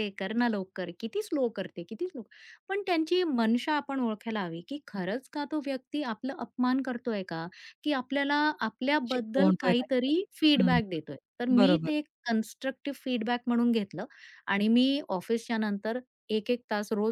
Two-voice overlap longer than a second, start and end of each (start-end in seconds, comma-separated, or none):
9.1-10.8